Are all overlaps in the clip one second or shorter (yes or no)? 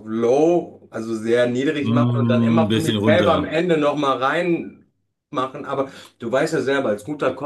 no